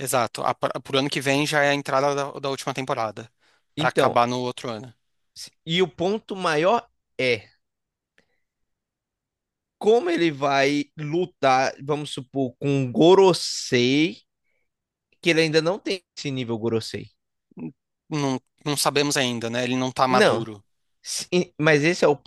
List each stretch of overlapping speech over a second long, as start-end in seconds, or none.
none